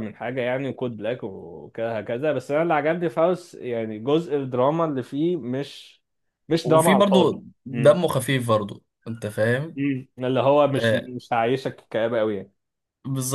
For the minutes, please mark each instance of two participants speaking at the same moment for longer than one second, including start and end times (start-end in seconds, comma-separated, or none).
6.6-8.0